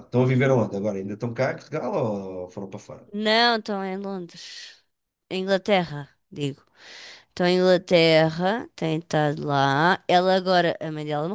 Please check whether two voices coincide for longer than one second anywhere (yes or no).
no